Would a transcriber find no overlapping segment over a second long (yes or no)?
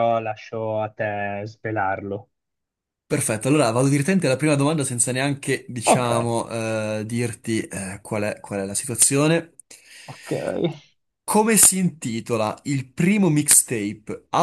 yes